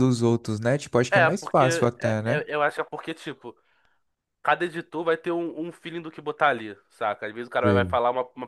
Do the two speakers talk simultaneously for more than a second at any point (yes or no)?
yes